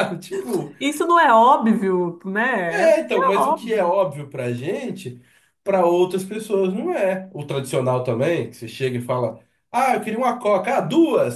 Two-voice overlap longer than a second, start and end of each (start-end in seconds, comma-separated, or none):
2.7-3.9